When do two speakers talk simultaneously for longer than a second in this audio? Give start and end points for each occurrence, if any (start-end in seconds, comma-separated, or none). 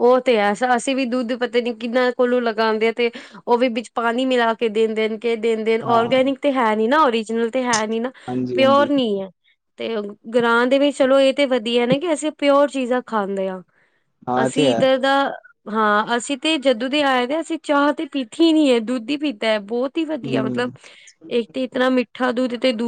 none